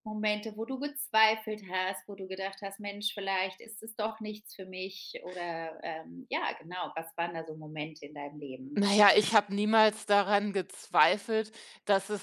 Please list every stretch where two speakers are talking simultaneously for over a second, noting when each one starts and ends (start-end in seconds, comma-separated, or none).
none